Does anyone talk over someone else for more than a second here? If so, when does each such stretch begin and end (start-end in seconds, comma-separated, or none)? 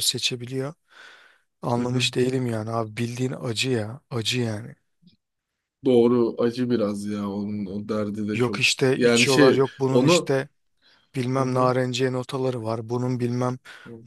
8.3-10.3